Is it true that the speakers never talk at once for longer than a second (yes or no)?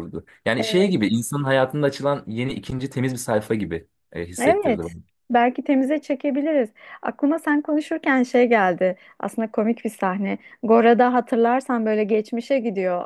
yes